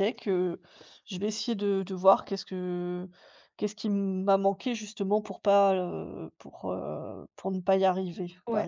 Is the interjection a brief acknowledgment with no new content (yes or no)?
no